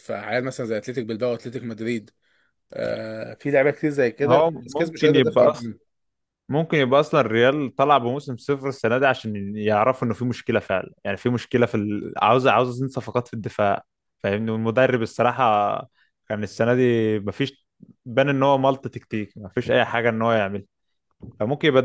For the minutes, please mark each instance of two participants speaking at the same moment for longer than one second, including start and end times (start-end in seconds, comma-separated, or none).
4.3-5.7